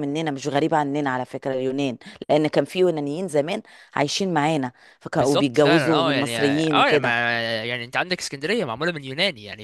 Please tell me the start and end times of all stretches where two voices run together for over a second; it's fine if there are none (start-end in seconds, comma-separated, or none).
5.1-7.2